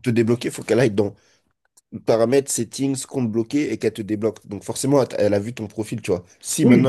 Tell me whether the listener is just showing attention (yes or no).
no